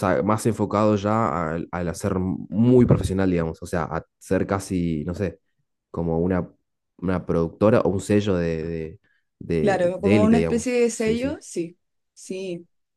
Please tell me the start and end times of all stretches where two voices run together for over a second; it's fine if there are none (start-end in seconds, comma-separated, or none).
9.6-11.4